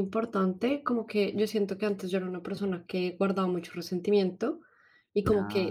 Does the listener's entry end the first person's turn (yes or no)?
no